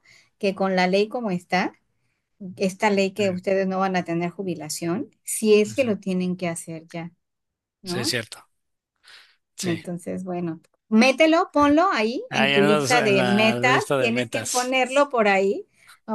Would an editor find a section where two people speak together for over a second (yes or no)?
yes